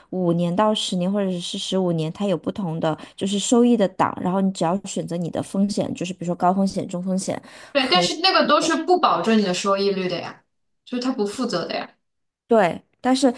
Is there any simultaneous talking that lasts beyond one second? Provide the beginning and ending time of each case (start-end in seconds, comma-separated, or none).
none